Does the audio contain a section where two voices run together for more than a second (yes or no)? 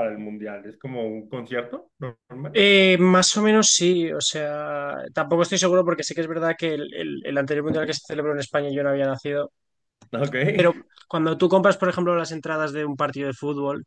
no